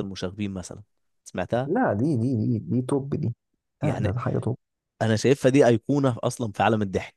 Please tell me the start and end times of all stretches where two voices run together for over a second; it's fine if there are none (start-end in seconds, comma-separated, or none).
none